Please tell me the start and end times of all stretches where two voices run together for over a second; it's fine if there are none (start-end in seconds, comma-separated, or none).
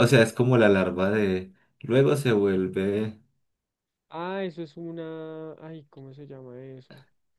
none